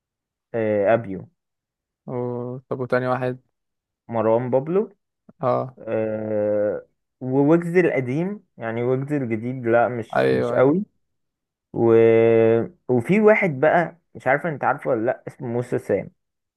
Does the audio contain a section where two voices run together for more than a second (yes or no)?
no